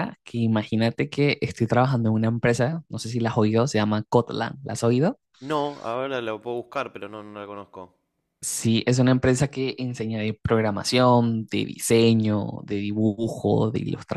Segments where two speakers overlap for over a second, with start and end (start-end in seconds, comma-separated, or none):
none